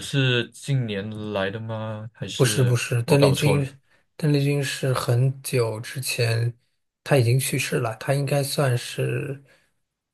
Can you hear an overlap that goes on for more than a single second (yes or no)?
yes